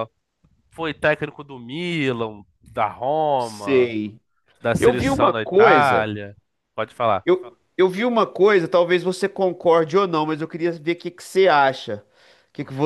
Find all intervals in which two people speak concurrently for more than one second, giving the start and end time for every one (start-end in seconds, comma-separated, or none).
4.8-6.1